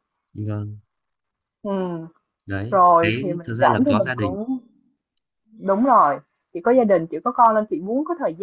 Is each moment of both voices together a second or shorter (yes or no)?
no